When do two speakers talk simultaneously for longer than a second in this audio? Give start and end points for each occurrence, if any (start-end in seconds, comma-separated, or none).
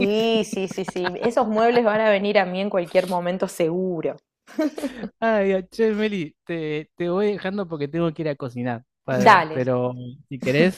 none